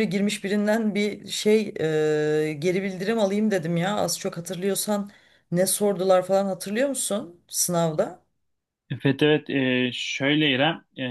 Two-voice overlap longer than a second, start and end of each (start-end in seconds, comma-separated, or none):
none